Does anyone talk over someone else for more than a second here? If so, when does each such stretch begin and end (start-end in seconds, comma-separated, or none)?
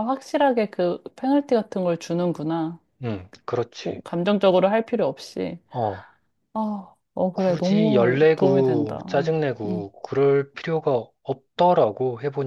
7.3-9.9